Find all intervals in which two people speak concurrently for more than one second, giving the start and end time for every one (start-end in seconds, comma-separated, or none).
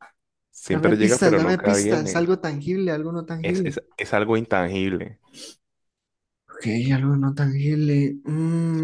0.7-2.3